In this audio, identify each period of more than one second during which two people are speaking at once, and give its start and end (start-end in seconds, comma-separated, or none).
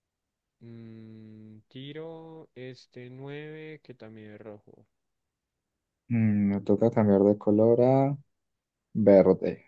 none